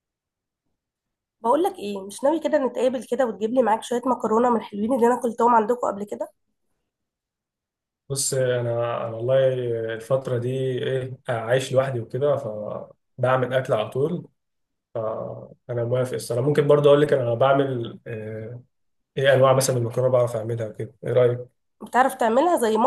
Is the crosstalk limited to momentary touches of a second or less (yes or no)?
yes